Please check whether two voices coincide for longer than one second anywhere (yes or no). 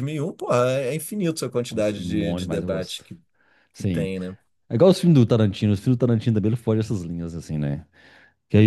yes